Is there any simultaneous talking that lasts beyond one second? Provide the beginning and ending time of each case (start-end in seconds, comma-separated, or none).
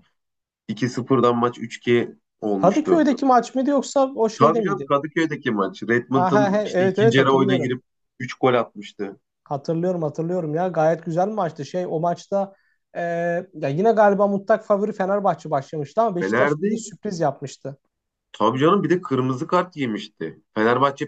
6.1-7.7